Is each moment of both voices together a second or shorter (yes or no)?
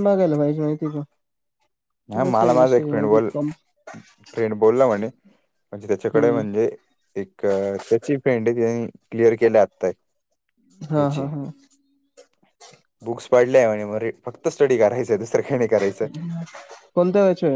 no